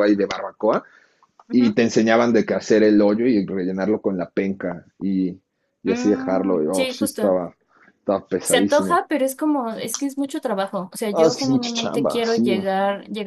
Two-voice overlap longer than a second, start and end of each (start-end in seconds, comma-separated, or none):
5.9-7.4, 11.1-12.5